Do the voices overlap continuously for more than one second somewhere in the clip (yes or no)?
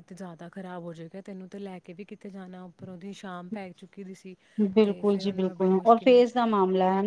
yes